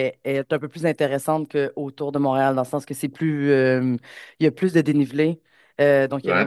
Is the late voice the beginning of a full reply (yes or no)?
no